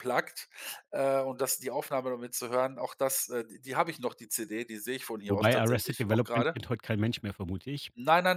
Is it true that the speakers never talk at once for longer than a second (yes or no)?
no